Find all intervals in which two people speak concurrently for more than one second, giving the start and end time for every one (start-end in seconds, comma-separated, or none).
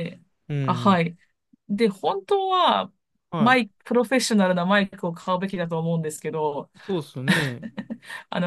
none